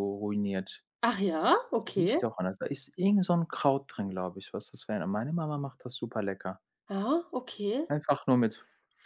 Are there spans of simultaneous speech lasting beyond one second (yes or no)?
no